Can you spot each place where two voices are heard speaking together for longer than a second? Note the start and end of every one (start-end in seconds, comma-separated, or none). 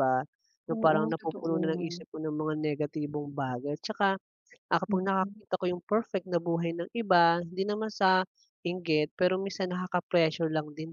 0.7-2.0